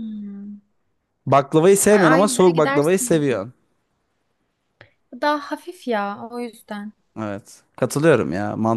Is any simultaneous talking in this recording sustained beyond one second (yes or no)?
yes